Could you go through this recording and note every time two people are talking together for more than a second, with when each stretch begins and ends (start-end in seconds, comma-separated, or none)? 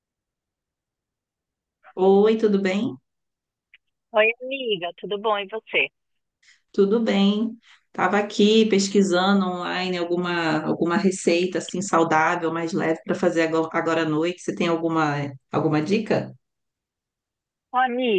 none